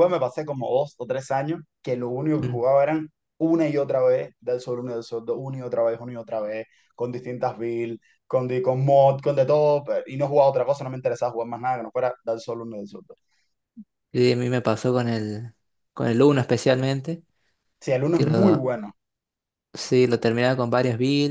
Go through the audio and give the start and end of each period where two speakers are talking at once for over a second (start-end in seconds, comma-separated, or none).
none